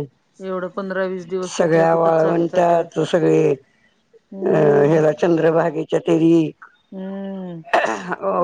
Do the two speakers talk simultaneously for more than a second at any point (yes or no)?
yes